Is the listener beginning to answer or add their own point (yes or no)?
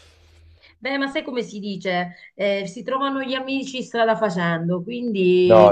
no